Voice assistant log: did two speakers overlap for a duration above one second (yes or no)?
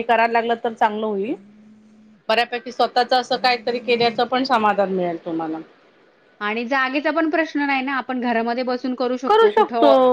no